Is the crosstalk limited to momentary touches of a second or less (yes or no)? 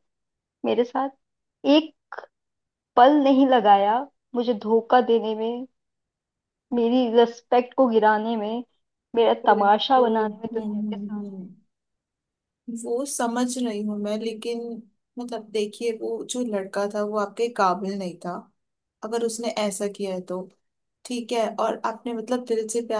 no